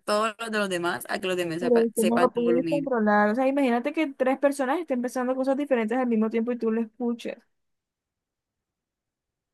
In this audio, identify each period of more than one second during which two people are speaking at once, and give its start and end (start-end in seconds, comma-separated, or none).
1.6-2.9